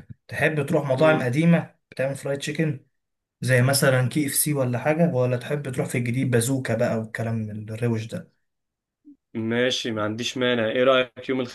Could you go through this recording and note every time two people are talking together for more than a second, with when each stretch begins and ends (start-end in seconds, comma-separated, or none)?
none